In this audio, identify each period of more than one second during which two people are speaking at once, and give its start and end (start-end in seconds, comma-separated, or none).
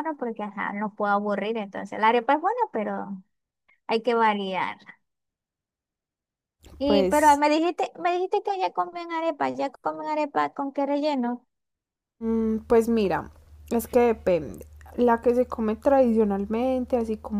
none